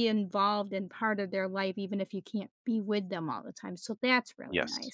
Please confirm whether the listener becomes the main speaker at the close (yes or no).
yes